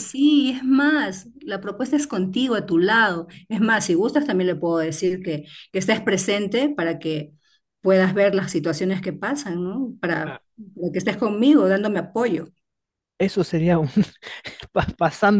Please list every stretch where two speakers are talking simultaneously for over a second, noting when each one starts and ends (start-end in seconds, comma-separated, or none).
none